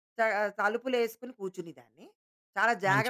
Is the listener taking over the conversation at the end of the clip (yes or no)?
no